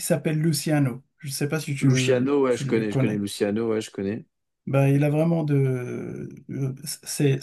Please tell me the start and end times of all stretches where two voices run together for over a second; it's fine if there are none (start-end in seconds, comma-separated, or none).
1.8-3.2